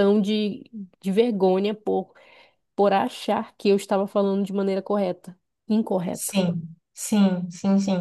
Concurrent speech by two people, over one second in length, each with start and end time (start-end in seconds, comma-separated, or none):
none